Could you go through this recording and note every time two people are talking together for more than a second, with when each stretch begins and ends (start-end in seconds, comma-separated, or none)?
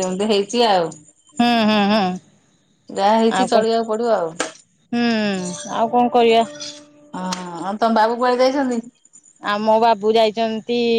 none